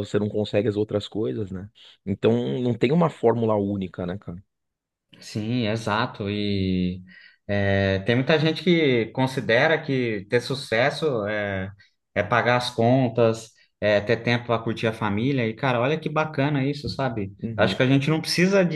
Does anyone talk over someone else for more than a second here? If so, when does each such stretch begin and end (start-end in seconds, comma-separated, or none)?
none